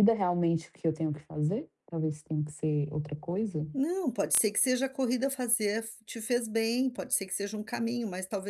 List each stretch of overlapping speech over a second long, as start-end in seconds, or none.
none